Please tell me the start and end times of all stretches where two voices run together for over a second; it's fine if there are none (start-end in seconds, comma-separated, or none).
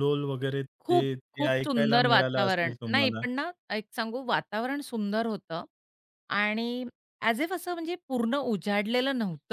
0.8-3.2